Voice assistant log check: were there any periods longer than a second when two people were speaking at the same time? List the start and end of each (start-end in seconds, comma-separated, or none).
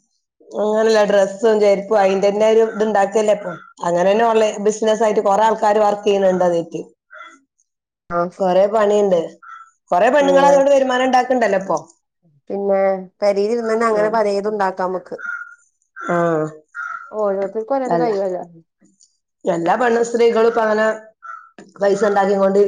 none